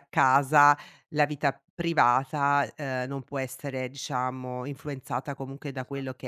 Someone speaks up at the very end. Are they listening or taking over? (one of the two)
listening